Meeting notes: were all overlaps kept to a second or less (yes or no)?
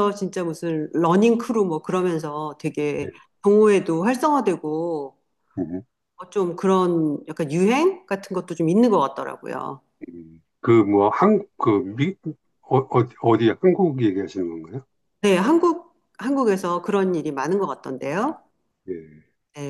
yes